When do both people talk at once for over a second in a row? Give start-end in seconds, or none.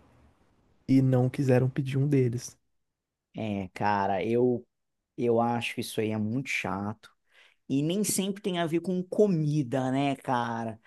none